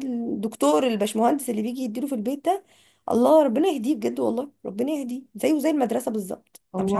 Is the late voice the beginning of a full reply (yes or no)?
yes